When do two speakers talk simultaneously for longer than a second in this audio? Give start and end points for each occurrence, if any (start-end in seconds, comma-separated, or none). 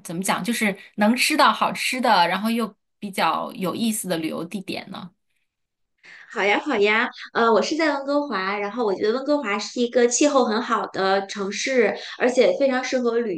none